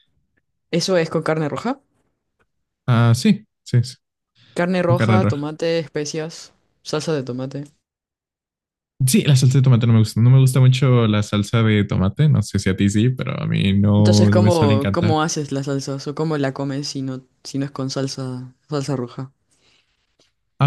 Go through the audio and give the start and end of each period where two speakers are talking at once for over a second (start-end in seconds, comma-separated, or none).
14.0-15.2